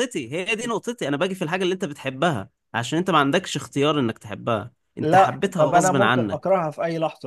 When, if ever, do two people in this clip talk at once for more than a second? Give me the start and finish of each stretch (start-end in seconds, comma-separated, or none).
5.0-6.5